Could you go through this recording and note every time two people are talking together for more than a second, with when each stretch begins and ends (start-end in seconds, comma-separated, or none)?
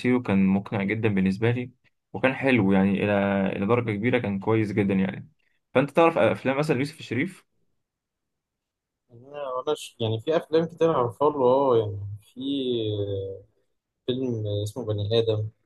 none